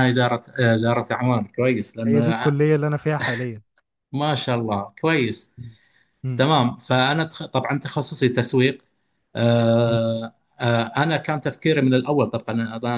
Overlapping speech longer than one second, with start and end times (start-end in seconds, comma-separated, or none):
none